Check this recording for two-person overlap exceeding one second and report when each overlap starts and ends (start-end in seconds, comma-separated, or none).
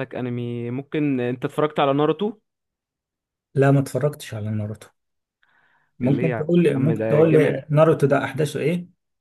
6.0-7.6